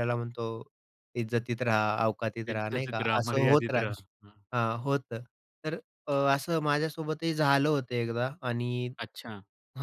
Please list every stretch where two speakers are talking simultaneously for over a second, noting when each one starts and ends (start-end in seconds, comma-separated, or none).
2.5-3.9